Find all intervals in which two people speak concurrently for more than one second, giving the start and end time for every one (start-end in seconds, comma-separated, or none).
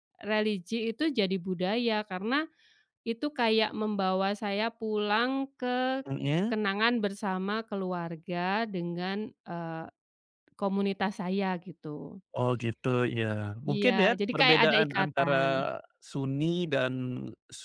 13.7-15.3